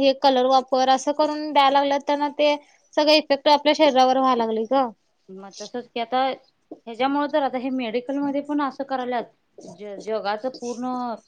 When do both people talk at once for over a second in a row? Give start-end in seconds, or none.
none